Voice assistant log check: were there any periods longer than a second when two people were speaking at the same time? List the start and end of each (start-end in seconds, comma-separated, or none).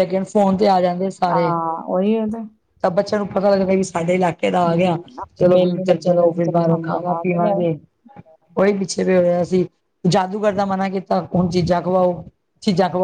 5.4-7.6